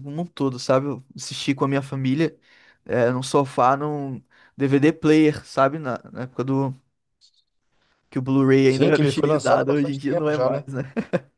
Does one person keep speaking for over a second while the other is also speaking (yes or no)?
yes